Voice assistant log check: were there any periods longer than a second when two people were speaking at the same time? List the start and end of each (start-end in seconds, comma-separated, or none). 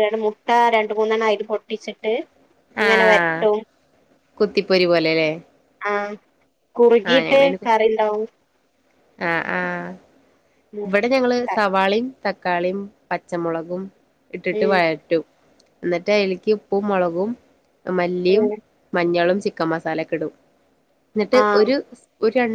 none